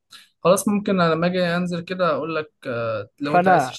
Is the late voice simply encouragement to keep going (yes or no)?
no